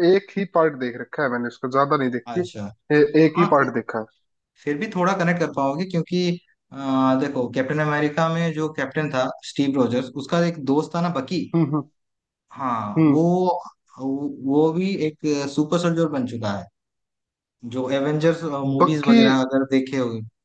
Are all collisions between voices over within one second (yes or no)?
yes